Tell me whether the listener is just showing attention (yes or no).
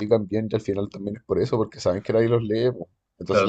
no